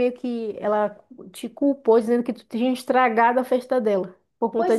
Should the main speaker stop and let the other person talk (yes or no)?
yes